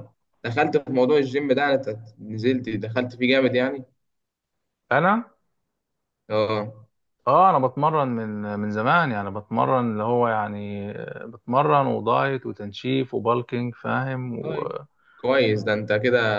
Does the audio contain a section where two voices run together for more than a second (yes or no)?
no